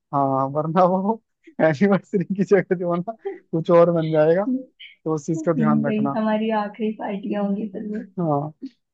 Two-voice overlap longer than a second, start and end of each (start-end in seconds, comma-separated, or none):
none